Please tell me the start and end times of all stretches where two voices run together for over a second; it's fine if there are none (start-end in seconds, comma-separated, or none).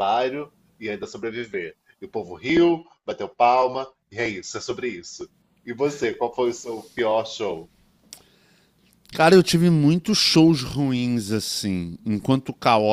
none